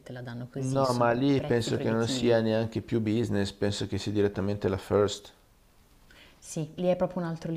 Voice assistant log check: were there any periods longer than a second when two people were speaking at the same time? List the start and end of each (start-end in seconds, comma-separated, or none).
0.6-2.4